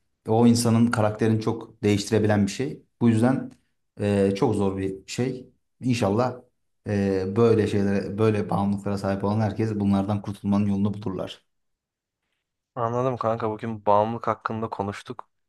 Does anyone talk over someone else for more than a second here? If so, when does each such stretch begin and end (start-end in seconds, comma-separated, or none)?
none